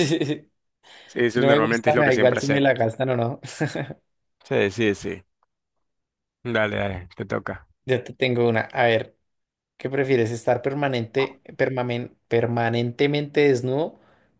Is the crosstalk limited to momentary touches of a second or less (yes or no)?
no